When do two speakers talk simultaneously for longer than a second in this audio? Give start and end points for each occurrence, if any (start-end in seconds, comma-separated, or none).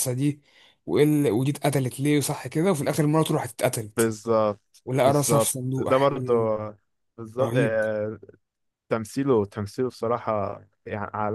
4.8-6.3